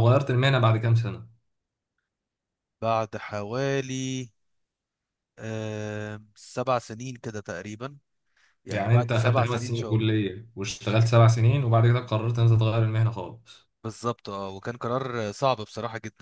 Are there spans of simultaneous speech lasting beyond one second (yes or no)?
yes